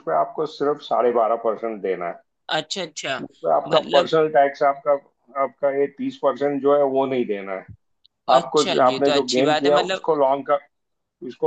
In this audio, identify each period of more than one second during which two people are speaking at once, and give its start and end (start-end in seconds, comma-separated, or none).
8.4-10.1